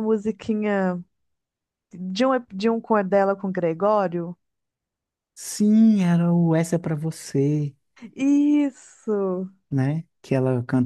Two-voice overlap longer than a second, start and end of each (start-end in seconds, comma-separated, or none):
none